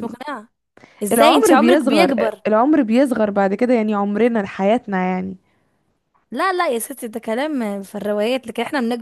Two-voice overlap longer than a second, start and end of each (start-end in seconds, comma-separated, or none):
1.1-2.4